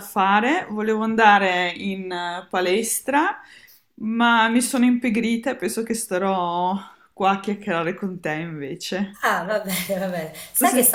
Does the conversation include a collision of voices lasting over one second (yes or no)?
no